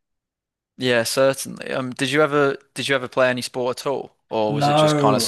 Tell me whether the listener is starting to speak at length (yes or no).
yes